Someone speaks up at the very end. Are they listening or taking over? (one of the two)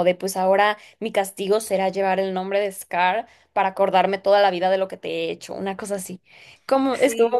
listening